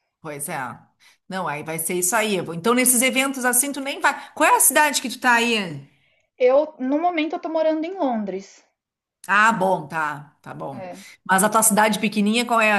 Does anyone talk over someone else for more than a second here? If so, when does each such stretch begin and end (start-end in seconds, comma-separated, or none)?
none